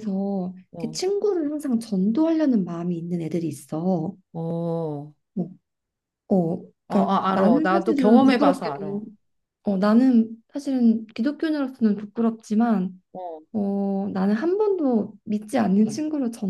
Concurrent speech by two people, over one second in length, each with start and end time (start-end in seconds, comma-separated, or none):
6.9-9.0